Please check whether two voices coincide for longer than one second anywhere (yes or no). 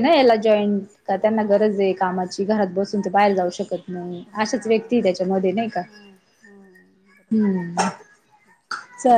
no